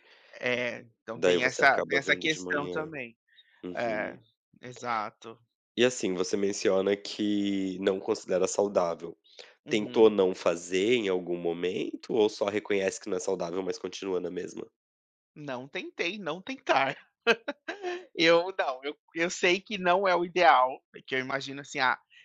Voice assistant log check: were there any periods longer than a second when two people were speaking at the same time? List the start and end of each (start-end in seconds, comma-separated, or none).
1.2-2.9